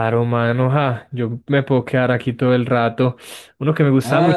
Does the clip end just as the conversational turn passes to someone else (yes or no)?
yes